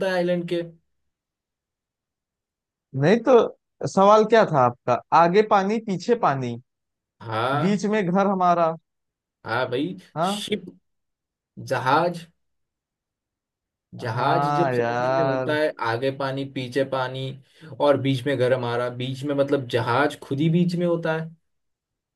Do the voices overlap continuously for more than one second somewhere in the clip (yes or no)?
yes